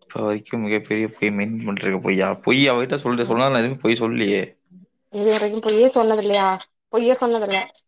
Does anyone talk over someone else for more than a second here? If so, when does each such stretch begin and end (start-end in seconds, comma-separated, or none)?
none